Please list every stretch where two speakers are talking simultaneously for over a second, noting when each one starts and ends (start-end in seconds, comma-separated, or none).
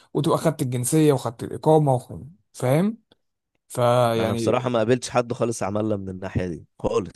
none